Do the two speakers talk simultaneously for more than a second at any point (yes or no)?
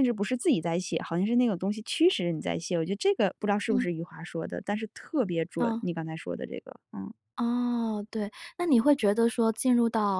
no